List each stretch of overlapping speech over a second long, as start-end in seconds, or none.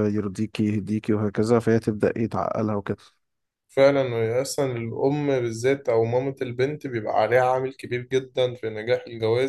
none